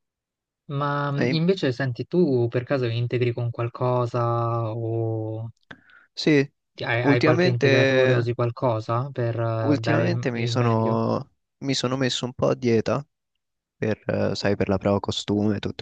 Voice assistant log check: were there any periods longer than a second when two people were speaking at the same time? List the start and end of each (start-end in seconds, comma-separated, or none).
7.0-8.3, 9.6-11.0